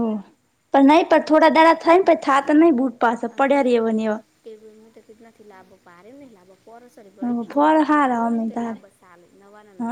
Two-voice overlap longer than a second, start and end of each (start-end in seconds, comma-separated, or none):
7.0-8.8